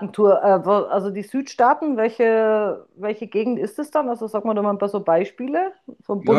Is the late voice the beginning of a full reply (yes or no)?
yes